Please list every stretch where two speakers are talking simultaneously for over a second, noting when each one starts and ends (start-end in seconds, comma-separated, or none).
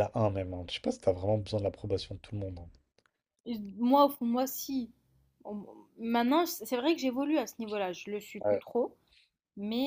none